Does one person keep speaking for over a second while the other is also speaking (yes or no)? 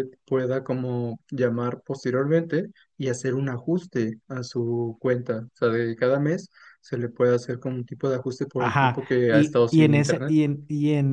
yes